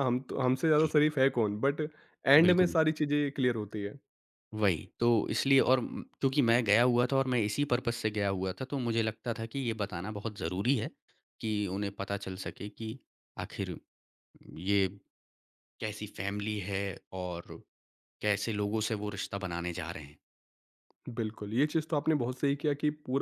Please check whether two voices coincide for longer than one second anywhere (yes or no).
no